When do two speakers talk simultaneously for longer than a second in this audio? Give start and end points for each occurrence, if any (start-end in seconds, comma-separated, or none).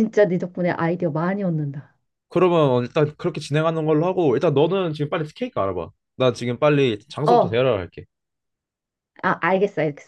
none